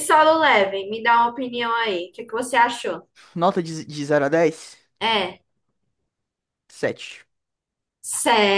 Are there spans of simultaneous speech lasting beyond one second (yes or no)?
no